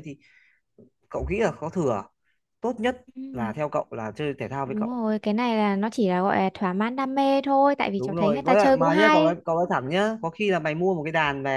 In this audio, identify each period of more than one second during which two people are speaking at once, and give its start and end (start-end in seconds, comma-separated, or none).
8.0-9.3